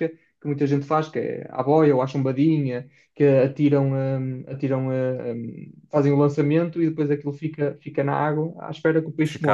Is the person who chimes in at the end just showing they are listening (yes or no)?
no